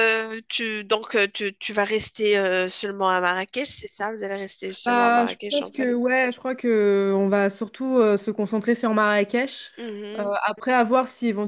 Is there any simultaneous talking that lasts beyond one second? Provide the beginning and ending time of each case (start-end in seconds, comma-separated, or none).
4.8-6.0